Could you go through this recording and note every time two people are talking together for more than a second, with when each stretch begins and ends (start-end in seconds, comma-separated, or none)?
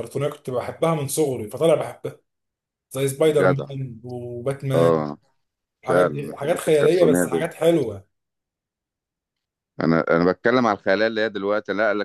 5.9-7.5